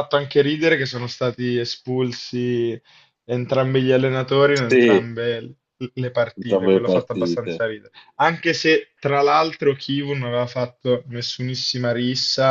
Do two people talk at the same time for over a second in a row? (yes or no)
yes